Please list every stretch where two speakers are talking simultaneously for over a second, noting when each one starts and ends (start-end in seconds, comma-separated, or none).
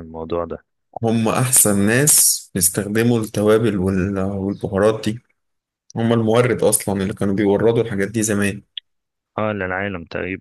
none